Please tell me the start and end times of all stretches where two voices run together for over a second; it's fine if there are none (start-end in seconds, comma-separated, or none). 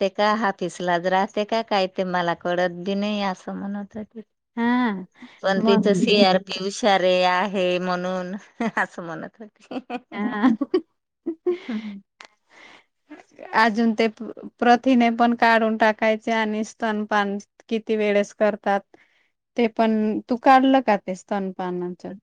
none